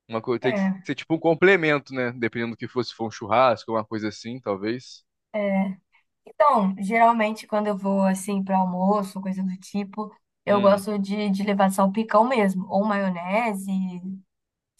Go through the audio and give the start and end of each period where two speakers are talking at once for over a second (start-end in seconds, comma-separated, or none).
none